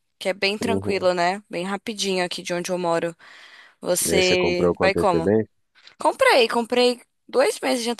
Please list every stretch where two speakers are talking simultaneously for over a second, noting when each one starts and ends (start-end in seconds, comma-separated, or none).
4.0-5.3